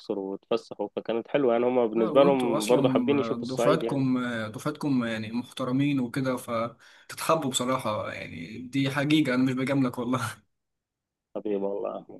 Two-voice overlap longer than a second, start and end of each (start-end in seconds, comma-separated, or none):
1.9-4.0